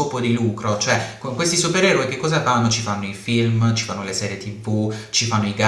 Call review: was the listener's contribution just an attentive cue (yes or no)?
yes